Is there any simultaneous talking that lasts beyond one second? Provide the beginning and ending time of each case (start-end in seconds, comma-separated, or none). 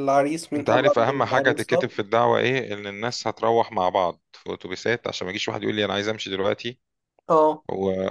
0.6-1.9